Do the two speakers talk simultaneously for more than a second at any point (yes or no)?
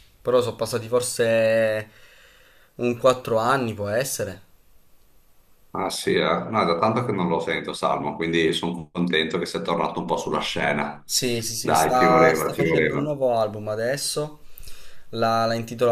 yes